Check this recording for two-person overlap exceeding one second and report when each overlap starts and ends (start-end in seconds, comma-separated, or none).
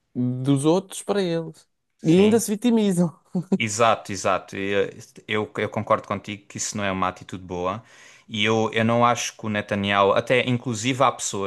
none